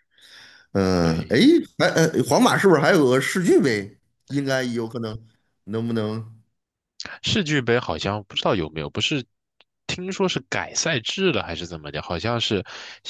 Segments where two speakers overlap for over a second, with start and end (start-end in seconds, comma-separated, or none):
none